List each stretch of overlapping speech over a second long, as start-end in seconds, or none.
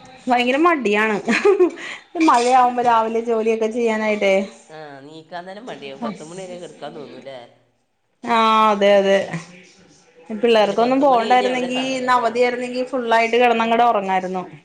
10.6-12.3